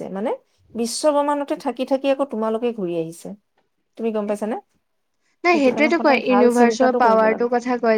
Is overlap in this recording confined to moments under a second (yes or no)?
no